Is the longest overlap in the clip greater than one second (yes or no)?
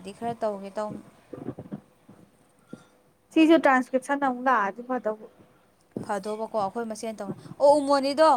no